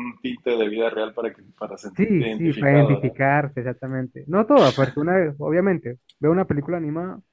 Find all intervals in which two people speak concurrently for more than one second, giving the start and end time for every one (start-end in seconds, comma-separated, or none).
1.9-3.2